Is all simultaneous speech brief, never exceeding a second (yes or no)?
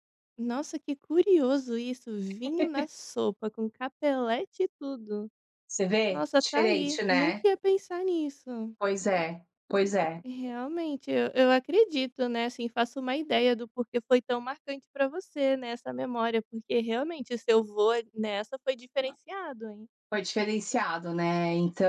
no